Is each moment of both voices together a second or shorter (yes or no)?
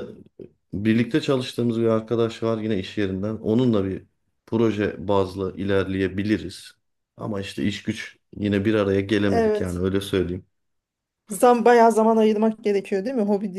yes